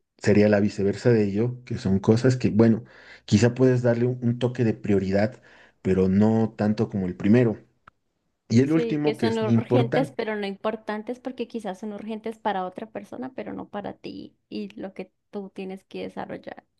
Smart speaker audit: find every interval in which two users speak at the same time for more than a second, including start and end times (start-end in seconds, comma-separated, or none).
8.6-10.2